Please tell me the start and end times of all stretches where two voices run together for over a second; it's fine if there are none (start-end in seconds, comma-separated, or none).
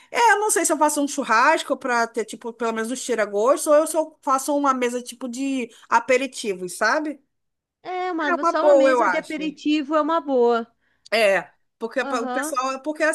8.3-9.5